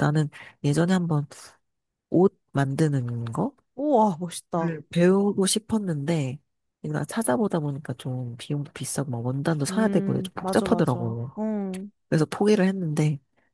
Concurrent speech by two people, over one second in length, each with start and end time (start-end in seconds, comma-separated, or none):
9.7-11.3